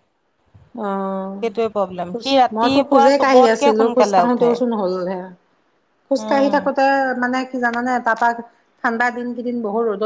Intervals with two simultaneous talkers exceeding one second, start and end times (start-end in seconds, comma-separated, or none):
2.1-4.5